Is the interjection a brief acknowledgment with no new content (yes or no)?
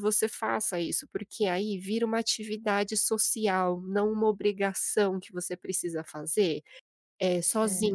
yes